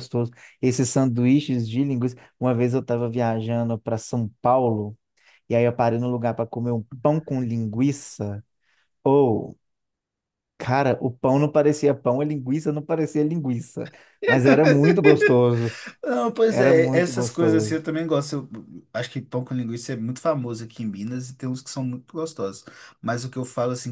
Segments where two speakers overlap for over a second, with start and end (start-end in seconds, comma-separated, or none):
16.5-17.9